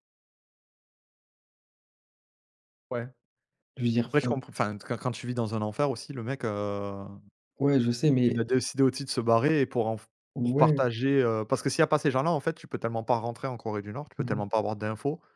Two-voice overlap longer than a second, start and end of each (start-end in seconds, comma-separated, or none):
none